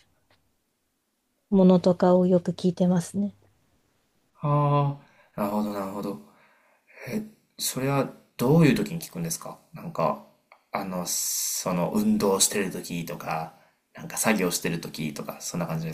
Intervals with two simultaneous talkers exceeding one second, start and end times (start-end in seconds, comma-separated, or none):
none